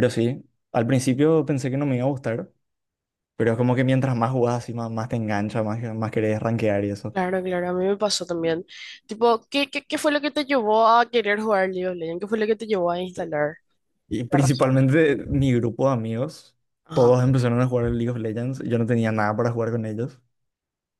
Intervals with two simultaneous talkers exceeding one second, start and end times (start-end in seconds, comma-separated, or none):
none